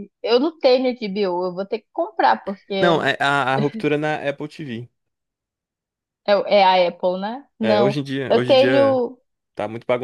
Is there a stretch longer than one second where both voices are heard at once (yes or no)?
yes